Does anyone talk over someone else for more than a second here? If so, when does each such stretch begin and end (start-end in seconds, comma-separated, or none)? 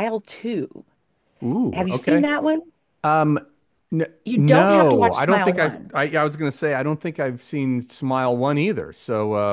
4.3-5.9